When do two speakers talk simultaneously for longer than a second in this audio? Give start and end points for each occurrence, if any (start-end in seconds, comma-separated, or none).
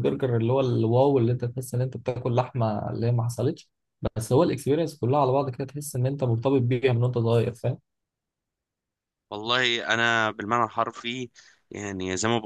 none